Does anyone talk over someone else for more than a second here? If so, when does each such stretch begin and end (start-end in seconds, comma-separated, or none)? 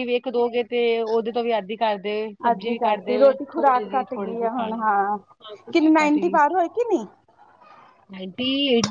2.5-4.8